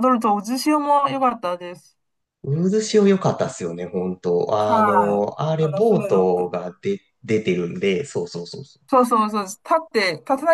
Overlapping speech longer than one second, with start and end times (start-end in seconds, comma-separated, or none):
4.5-6.5